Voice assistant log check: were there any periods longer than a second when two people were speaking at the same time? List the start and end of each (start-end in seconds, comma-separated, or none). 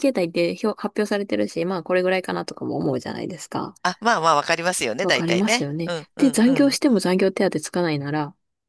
5.0-6.8